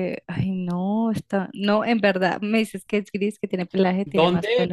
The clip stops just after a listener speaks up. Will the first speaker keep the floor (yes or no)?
no